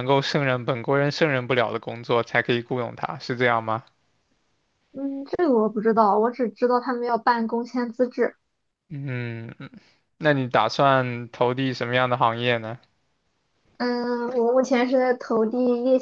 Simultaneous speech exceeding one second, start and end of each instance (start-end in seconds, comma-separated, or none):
none